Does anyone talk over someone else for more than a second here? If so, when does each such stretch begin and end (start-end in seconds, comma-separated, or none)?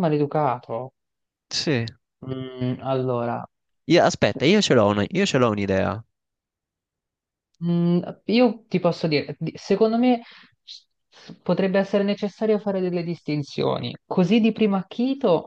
none